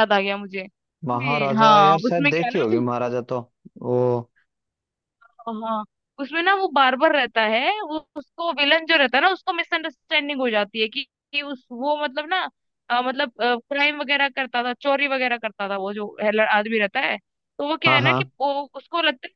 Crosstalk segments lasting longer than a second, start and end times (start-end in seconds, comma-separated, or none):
1.1-2.6